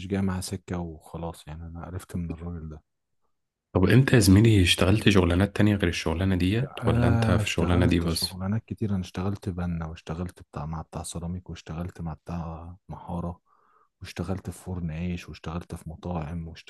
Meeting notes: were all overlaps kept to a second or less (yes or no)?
no